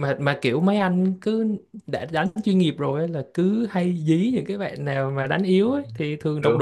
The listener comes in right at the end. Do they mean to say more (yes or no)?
no